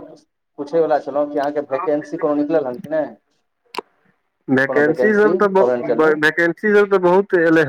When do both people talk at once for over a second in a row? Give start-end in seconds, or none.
4.7-6.1